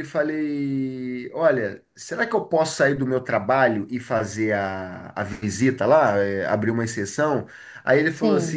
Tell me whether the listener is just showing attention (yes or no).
yes